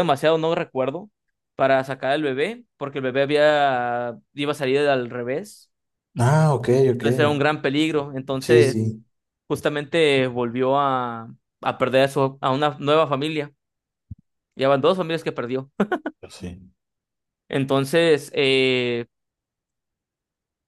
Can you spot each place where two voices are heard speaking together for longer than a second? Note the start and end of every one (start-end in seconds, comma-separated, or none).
none